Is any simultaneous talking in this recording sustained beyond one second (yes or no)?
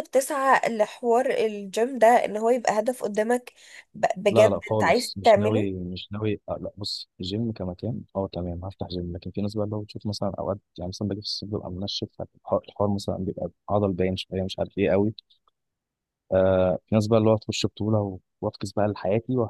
yes